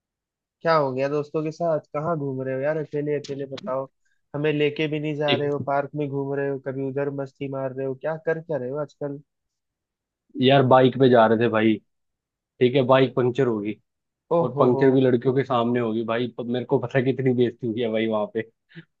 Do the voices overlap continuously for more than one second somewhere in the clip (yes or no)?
no